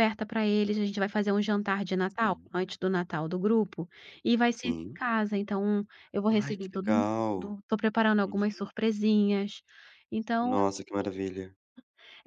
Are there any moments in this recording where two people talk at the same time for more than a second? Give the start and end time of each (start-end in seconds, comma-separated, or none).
6.3-7.6